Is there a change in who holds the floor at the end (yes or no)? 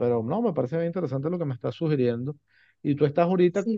no